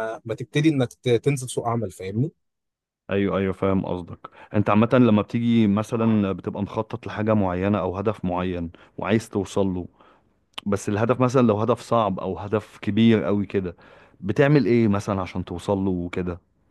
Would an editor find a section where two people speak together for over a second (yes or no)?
no